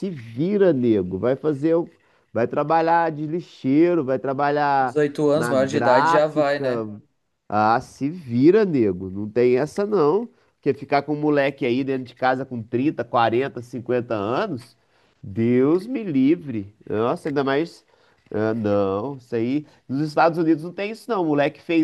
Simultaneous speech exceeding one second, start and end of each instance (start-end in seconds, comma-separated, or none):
4.8-6.7